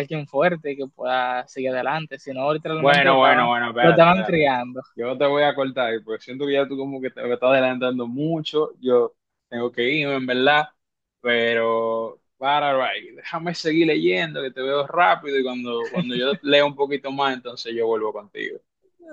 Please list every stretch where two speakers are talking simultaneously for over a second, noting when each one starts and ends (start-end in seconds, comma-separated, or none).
2.8-4.4